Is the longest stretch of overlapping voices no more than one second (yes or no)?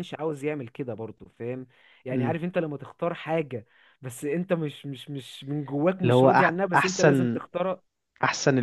no